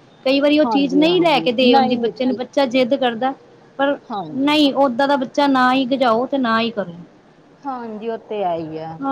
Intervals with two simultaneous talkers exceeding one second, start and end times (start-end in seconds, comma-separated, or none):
0.6-2.4